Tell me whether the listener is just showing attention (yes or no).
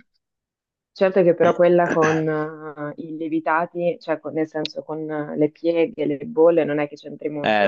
no